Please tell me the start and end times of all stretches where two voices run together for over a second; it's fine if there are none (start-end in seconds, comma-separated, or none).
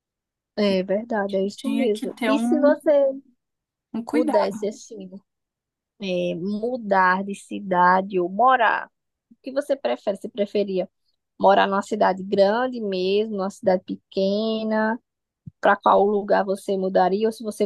1.6-2.8